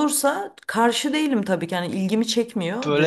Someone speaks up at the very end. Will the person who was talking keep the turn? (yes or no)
no